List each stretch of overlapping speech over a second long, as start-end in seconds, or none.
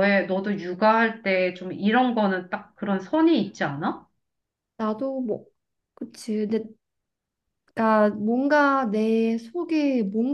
none